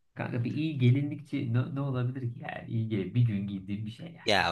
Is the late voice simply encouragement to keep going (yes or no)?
no